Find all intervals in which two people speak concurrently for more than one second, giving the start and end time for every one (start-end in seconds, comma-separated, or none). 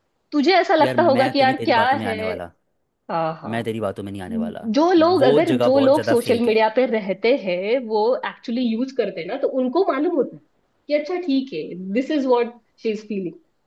0.8-2.3, 5.2-6.6